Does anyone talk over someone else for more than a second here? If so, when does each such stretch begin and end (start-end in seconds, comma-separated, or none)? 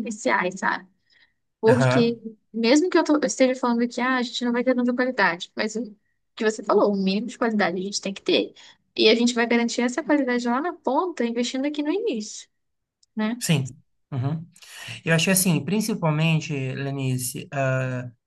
none